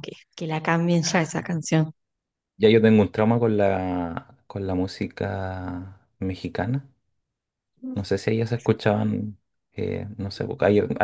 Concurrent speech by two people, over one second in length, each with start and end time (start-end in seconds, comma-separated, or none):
none